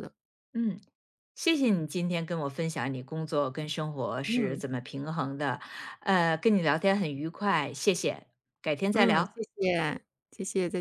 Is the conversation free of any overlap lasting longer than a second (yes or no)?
yes